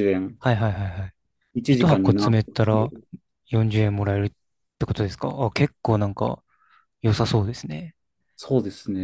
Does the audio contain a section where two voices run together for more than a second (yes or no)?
yes